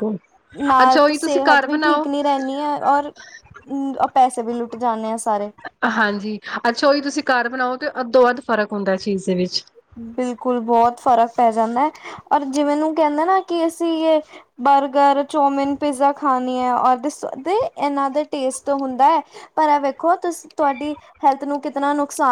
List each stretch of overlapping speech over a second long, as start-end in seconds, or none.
none